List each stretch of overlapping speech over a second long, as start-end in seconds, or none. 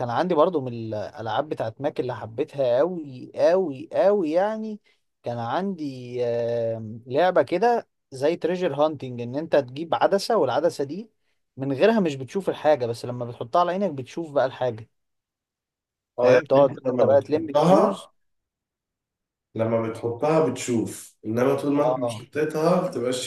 16.2-18.1